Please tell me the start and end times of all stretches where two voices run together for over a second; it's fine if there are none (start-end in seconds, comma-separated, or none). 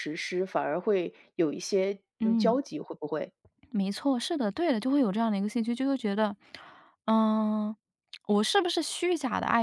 none